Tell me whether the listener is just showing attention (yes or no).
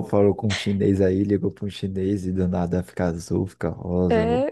no